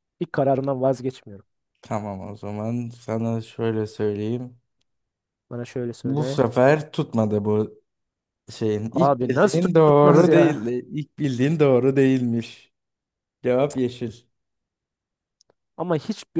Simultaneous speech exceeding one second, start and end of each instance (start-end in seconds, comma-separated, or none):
8.9-10.7